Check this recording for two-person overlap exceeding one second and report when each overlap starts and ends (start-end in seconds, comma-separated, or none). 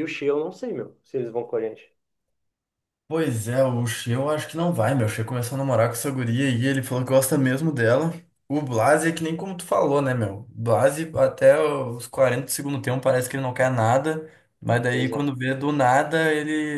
none